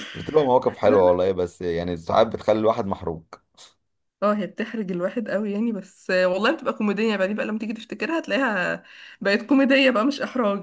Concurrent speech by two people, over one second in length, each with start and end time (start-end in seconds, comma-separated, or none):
none